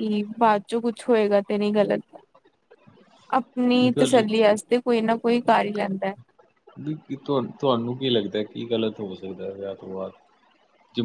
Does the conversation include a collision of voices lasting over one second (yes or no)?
no